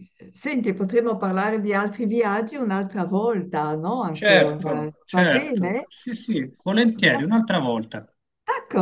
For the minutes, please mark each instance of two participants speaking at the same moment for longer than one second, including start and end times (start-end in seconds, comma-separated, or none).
4.1-5.9